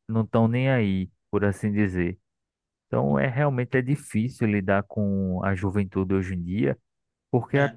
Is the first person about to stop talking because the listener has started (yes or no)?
no